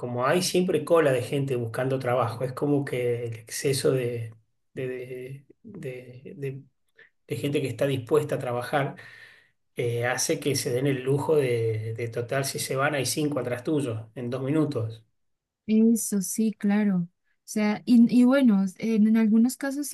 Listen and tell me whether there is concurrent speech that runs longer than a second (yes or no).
no